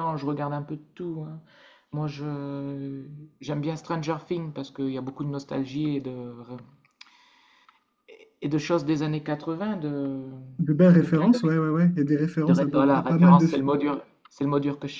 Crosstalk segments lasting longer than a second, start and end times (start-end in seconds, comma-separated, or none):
12.5-13.7